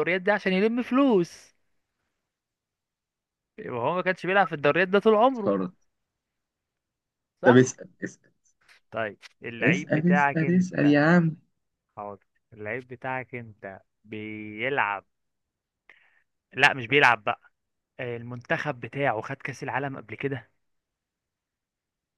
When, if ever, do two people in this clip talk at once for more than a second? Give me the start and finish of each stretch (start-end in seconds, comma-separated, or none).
9.6-11.0